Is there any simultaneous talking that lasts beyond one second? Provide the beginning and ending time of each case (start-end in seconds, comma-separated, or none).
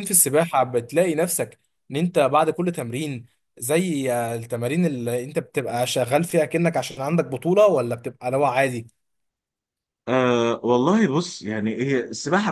none